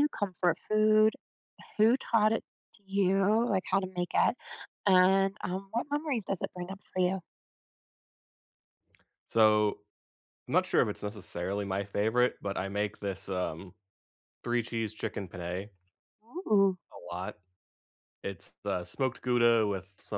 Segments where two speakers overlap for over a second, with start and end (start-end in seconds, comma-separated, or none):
none